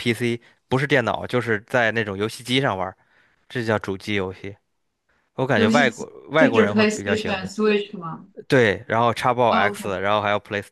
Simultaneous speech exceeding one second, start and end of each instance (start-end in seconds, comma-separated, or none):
5.5-7.5